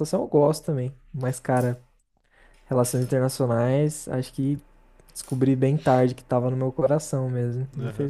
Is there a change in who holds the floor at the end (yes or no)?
yes